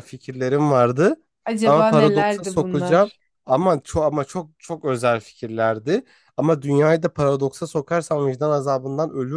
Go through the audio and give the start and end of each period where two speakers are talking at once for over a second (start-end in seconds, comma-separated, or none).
1.6-3.1